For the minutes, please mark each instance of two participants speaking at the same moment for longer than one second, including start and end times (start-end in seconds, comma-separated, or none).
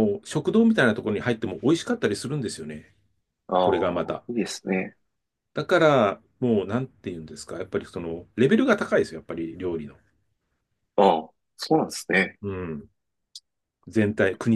none